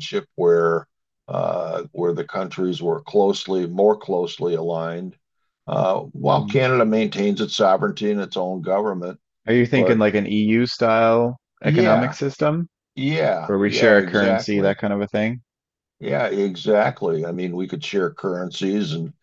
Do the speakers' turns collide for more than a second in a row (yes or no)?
yes